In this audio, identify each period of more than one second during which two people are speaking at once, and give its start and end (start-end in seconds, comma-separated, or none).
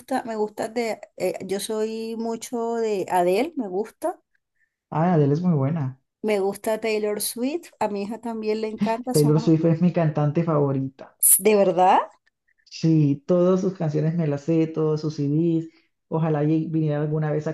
none